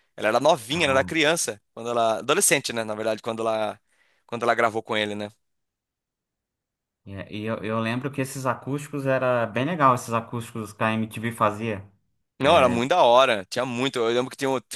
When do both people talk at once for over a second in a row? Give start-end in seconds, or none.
none